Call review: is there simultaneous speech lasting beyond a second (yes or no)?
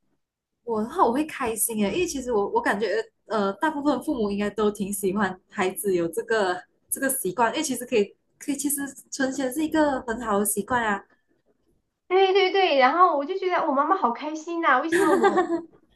no